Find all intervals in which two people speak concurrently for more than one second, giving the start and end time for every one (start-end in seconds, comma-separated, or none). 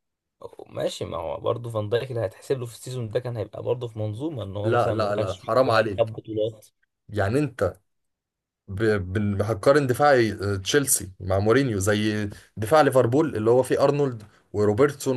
4.6-6.1